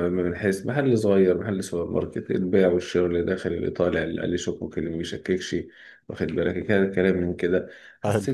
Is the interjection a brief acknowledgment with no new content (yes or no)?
yes